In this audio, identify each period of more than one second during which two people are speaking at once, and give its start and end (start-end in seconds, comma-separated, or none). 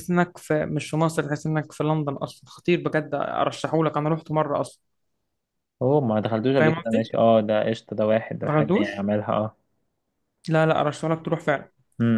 none